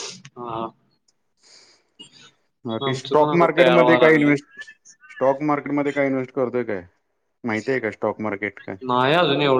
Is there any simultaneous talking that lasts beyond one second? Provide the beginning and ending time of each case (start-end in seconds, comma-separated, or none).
2.9-4.3